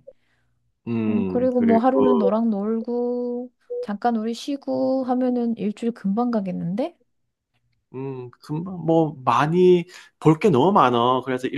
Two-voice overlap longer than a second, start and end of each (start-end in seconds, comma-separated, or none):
1.1-2.3